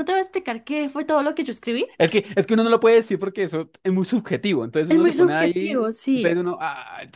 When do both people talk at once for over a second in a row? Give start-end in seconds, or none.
4.9-6.4